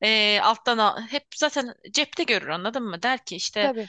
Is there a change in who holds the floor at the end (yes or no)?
no